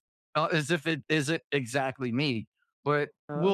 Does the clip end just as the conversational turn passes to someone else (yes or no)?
no